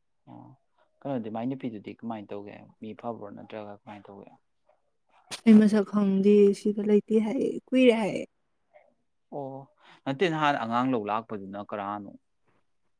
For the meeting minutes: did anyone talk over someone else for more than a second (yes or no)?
no